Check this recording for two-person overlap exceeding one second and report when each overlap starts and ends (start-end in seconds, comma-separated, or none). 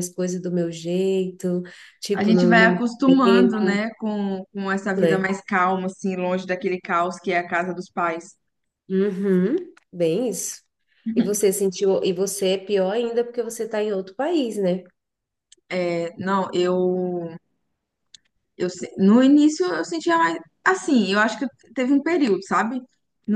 2.1-3.8